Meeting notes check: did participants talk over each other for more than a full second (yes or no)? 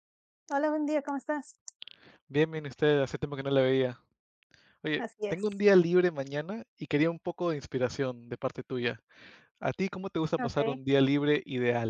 no